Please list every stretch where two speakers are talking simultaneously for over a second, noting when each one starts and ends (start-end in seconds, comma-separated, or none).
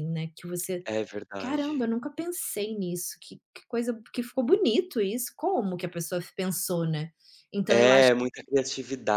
none